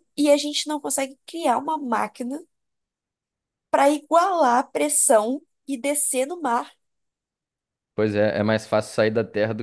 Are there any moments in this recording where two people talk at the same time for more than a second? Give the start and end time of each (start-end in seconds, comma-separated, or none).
none